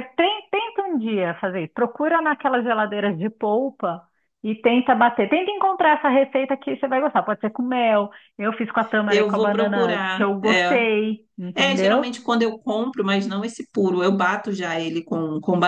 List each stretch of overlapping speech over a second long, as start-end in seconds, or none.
9.1-10.8